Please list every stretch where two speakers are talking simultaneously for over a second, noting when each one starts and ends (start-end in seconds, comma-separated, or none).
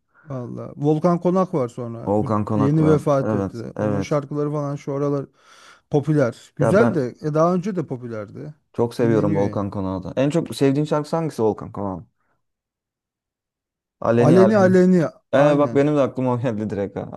2.1-4.2